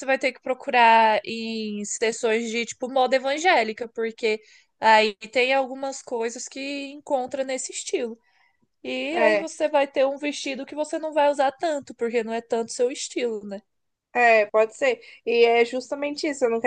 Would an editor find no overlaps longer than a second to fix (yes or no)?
yes